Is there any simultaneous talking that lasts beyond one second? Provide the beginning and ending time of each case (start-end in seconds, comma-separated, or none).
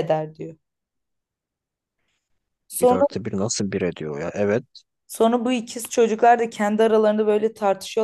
none